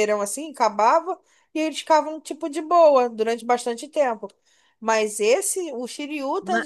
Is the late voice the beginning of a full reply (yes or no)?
no